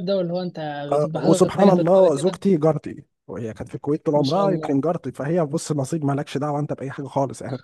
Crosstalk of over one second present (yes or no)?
yes